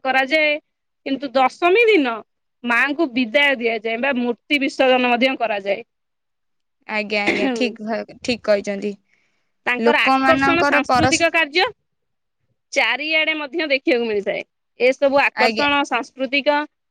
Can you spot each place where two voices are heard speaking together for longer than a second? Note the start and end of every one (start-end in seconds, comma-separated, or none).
9.9-11.2